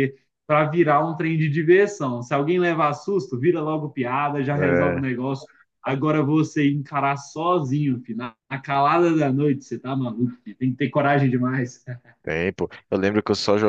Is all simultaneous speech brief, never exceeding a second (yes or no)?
yes